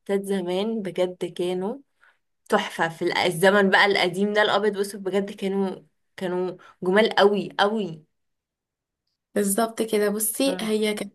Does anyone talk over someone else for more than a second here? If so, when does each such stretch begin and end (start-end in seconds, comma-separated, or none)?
none